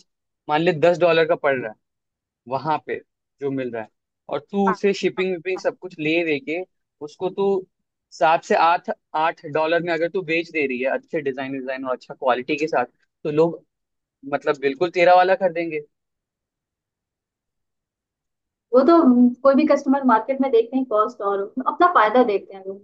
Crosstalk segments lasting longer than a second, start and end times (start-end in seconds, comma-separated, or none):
none